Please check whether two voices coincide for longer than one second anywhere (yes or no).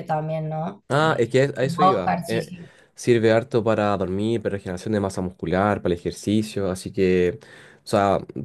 yes